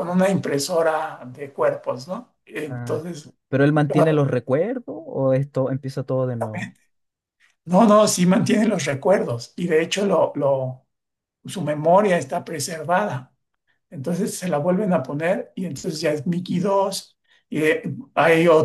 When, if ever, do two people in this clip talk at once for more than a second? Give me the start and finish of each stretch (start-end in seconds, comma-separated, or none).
none